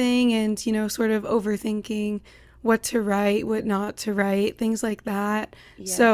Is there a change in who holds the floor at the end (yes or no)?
no